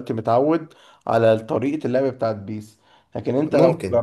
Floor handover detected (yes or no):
no